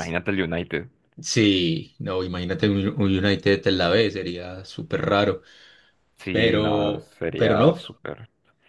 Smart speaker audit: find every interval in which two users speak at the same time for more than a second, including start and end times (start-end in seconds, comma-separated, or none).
6.3-7.8